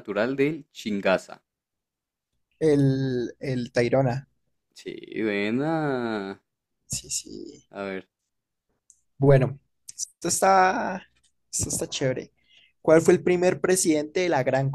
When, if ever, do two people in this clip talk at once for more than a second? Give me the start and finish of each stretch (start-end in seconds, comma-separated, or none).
none